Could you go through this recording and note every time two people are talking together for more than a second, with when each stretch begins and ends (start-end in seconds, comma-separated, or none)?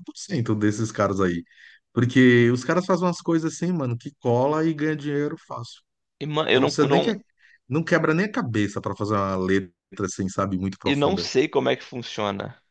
none